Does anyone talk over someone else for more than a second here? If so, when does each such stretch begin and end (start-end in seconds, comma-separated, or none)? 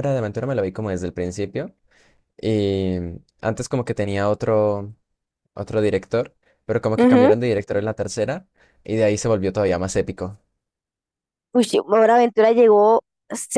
none